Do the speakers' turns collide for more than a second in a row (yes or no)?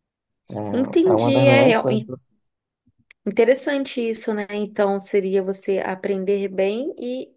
yes